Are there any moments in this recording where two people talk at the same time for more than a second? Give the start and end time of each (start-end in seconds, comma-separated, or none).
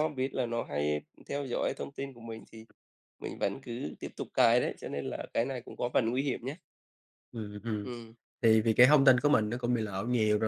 none